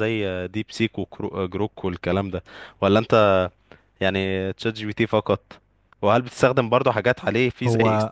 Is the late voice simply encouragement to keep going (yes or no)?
yes